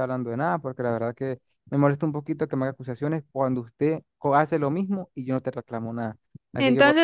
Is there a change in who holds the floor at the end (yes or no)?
yes